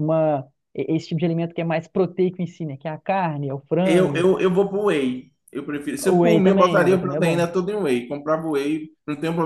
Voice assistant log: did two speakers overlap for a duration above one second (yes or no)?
yes